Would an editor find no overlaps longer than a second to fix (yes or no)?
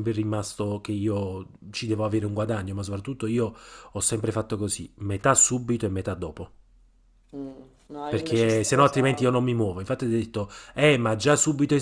no